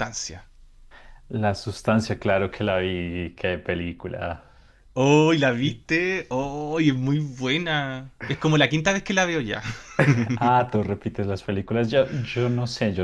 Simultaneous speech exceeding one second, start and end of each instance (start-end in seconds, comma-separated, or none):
none